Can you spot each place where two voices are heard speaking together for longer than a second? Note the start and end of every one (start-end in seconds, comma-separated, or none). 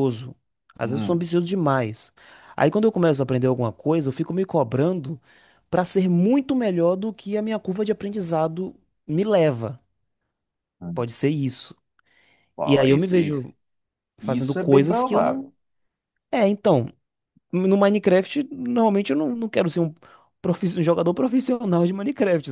14.2-15.5